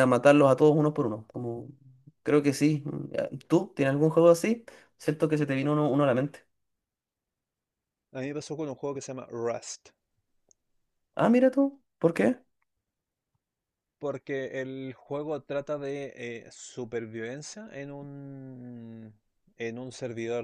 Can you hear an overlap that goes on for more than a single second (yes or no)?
no